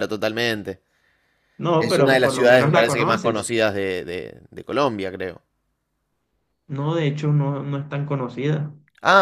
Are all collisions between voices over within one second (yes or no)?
no